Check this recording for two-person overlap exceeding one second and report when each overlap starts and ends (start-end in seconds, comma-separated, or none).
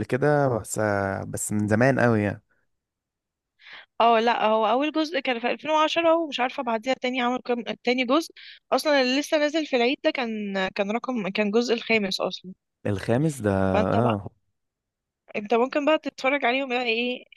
none